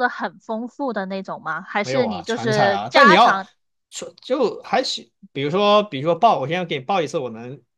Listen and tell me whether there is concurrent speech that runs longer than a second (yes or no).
yes